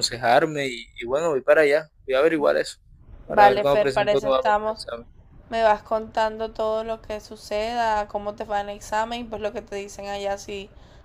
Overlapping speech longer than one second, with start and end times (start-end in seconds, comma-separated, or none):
3.3-4.8